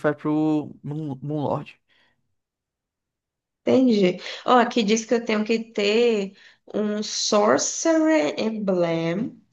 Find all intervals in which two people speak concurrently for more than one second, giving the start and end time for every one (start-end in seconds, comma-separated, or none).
none